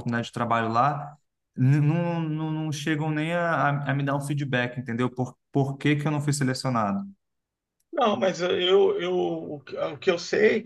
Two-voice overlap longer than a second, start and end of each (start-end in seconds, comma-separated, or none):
none